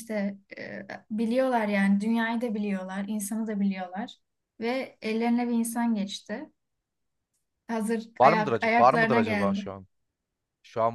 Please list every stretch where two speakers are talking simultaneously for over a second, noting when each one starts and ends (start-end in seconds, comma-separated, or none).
8.2-9.7